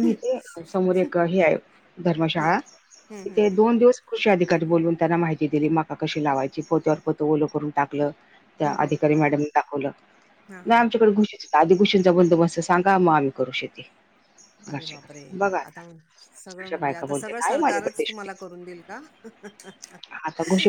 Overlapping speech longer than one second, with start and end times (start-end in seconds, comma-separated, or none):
16.6-18.5